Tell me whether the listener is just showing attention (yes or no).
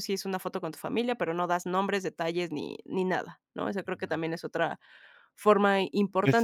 no